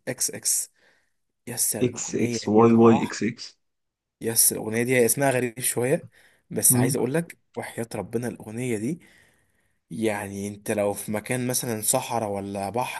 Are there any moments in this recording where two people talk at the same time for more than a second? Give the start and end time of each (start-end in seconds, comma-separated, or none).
1.8-3.1